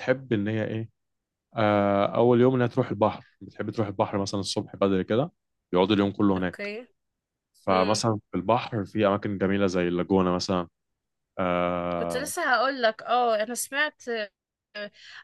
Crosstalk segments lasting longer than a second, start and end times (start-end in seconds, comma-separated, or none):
none